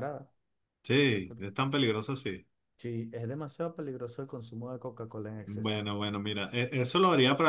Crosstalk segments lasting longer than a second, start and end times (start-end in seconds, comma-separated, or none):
none